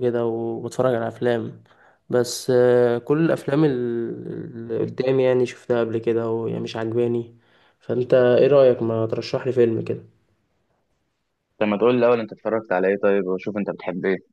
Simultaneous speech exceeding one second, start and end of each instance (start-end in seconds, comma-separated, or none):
none